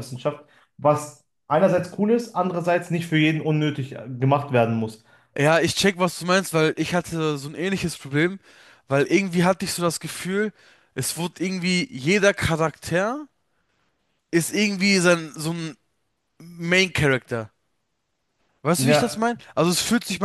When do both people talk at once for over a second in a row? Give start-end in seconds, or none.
none